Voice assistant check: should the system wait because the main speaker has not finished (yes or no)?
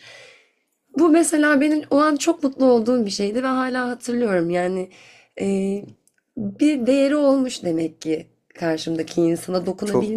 yes